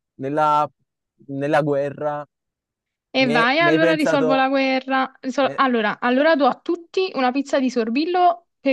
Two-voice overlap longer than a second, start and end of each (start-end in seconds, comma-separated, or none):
3.2-4.5